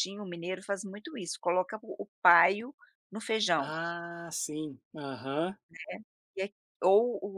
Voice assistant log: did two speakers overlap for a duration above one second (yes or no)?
no